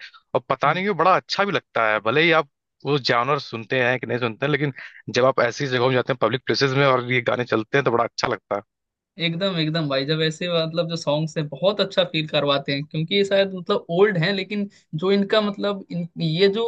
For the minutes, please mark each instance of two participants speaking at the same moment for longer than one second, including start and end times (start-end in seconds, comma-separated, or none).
none